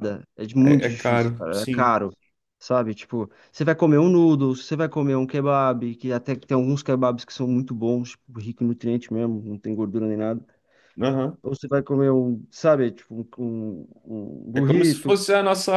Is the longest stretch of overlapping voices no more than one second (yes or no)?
no